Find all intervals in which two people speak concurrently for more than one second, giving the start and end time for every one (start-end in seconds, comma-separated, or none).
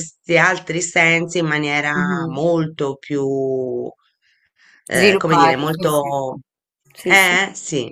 4.9-6.2